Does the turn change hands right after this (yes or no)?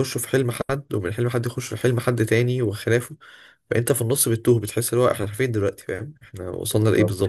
yes